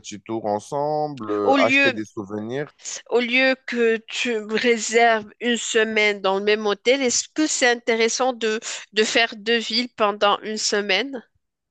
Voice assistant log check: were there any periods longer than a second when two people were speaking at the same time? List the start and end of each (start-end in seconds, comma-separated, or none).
none